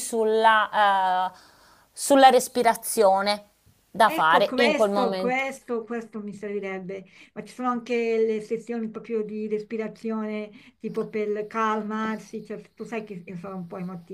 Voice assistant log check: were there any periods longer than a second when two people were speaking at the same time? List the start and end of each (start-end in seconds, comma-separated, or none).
4.0-5.4